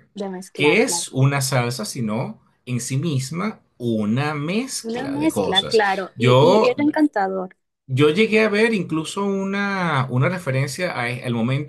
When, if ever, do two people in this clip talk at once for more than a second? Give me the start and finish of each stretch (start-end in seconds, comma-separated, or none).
4.8-6.8